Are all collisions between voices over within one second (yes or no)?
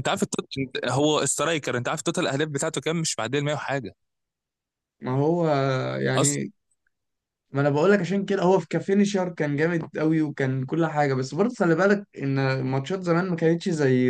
yes